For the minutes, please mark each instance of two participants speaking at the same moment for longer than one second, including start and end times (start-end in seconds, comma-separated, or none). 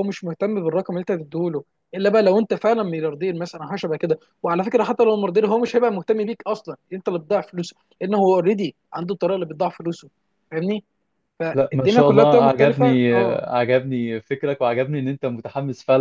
11.5-13.4